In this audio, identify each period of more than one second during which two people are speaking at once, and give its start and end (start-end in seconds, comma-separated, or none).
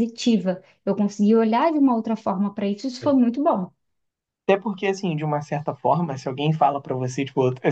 none